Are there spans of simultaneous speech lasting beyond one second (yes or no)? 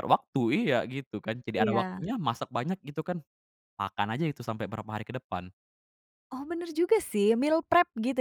no